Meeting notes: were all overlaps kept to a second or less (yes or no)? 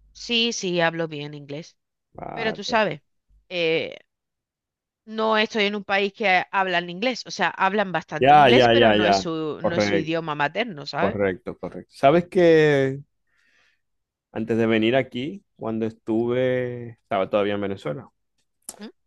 no